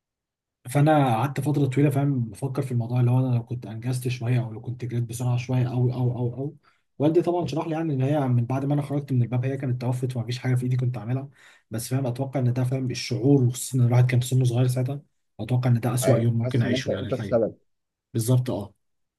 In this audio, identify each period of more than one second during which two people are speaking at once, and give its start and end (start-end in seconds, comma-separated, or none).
16.0-17.4